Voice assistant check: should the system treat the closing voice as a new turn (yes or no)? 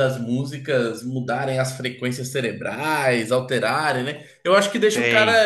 no